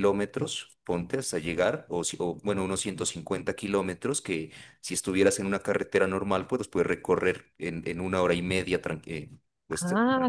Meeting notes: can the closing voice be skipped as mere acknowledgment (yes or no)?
no